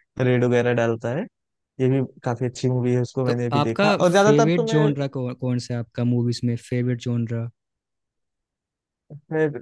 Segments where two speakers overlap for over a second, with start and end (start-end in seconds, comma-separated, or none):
3.3-4.9